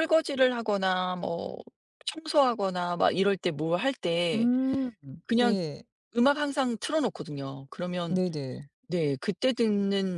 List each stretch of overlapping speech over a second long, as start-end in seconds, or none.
none